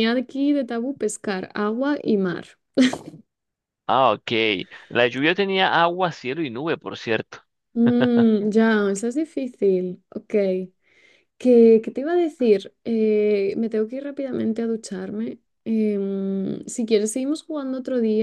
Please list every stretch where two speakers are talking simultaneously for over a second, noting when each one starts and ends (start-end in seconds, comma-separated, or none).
none